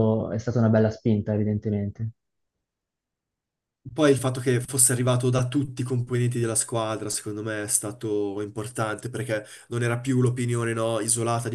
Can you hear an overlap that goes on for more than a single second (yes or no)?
no